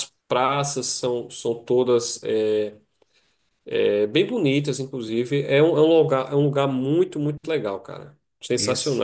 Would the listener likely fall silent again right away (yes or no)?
no